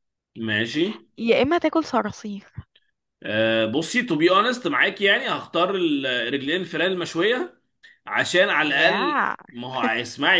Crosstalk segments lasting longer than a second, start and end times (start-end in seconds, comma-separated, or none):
none